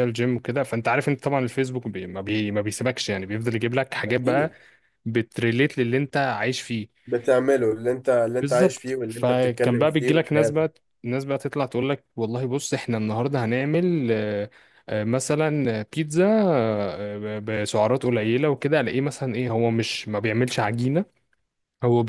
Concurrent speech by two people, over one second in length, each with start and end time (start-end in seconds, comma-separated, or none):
8.4-10.7